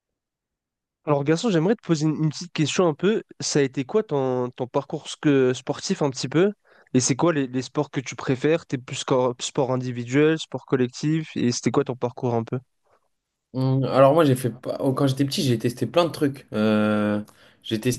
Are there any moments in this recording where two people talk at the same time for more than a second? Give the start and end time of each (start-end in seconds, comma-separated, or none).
none